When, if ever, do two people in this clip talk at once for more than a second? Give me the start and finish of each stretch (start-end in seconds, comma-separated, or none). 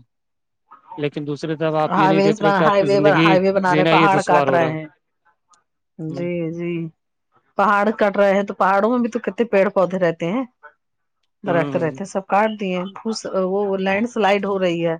2.0-4.7